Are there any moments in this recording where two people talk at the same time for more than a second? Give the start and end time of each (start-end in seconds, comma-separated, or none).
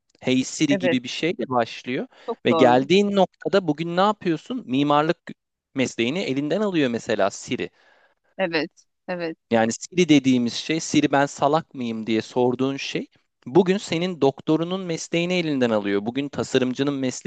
none